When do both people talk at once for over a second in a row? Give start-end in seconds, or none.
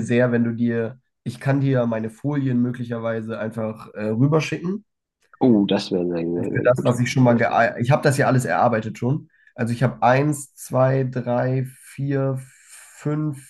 none